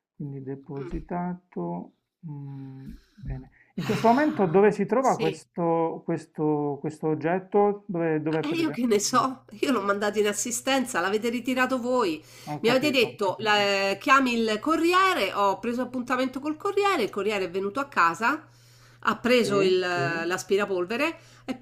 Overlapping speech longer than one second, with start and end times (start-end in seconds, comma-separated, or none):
none